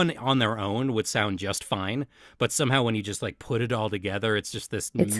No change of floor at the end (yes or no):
no